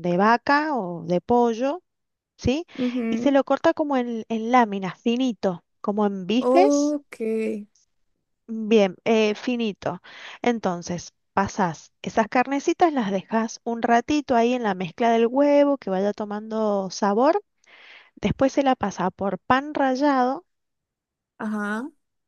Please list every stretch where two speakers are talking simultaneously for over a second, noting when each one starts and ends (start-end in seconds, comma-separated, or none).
none